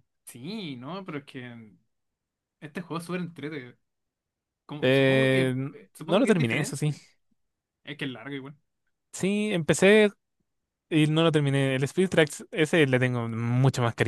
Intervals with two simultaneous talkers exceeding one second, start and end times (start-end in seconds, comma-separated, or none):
4.9-6.9